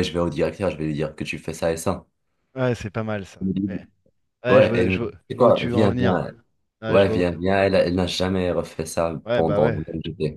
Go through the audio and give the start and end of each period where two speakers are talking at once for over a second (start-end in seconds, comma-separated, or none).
4.5-6.3